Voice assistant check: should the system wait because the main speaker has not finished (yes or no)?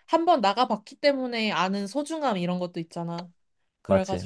yes